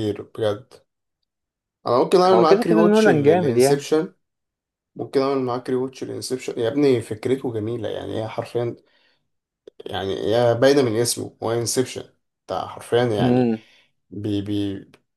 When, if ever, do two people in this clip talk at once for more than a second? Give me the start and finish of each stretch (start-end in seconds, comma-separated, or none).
2.3-4.0